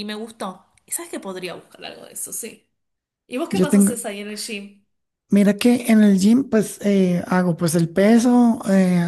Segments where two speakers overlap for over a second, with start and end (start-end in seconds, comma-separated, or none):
none